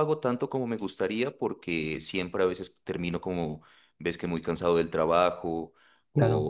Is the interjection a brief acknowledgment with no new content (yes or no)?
yes